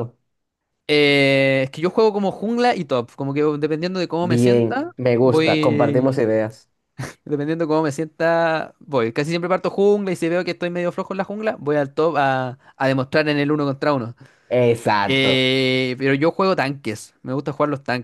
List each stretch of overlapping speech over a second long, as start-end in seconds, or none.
4.2-6.3